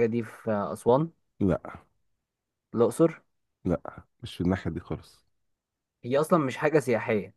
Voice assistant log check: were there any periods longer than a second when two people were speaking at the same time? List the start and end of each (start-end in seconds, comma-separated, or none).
none